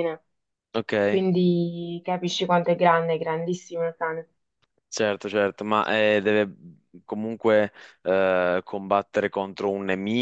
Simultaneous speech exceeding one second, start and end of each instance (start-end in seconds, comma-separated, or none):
none